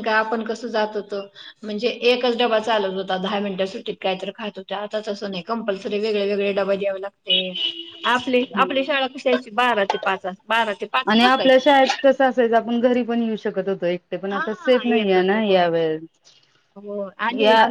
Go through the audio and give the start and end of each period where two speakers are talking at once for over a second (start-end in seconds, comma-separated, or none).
14.3-15.6